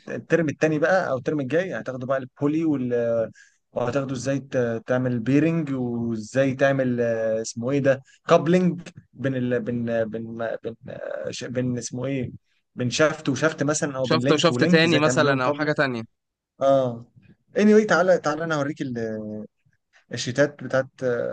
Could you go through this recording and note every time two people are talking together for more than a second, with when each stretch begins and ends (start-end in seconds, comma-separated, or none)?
14.0-15.7